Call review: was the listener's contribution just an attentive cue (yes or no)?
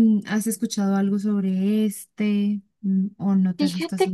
no